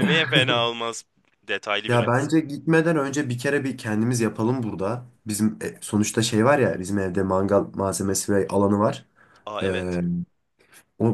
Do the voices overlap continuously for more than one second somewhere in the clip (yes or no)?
no